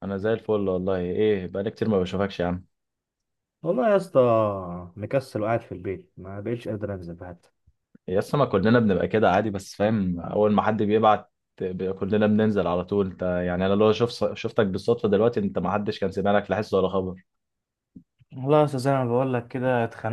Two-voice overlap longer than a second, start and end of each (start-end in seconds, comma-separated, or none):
none